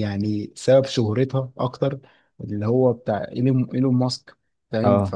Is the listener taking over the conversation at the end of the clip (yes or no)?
no